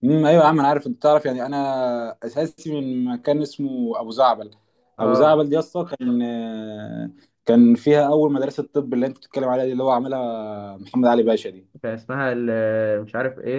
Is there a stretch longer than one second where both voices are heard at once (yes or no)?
no